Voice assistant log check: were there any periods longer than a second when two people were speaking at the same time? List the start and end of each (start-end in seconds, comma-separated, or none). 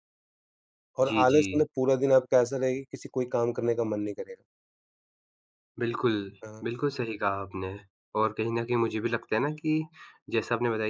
none